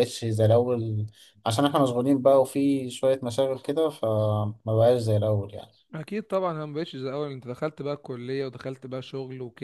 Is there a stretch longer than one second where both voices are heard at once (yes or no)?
no